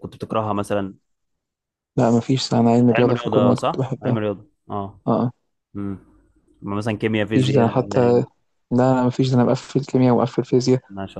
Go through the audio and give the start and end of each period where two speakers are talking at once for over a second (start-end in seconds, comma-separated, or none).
2.8-4.2